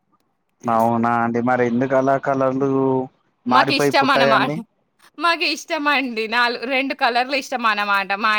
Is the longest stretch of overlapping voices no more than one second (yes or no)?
yes